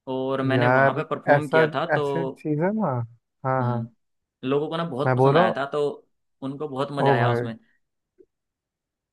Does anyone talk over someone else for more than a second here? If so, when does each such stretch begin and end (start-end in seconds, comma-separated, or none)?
0.5-2.4